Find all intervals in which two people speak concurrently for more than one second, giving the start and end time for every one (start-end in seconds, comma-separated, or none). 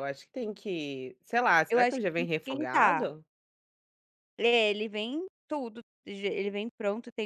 1.7-3.1